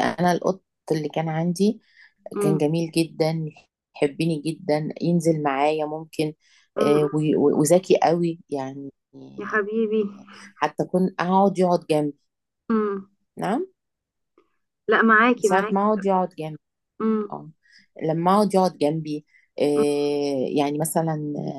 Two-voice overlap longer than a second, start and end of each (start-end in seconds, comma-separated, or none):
none